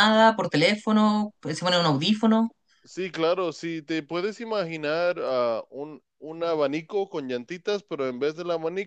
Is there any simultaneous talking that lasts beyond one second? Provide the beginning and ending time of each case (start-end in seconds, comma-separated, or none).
none